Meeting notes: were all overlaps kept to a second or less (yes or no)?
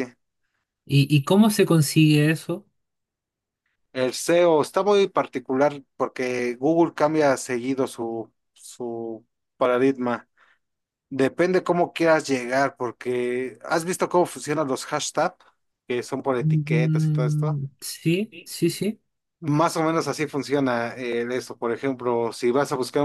no